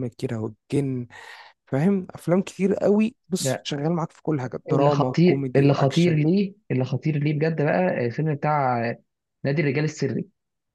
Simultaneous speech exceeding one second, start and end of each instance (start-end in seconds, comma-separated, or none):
4.7-6.2